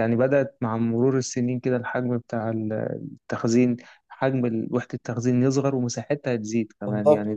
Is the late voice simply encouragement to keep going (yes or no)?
yes